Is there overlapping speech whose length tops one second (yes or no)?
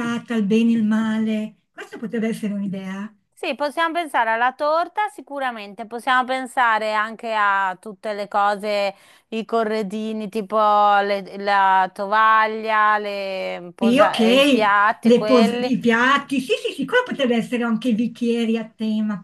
yes